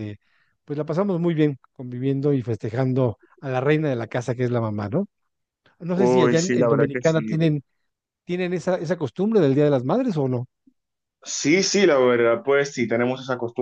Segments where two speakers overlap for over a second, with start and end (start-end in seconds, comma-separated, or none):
5.9-7.4